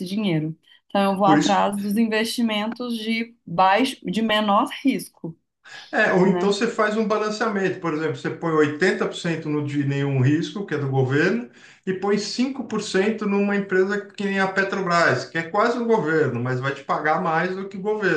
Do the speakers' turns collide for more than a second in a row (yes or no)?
no